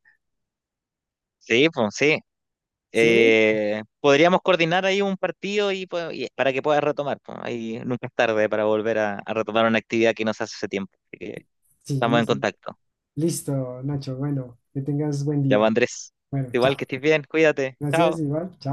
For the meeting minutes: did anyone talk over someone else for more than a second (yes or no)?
no